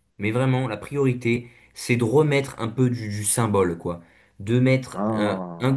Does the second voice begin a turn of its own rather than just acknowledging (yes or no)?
no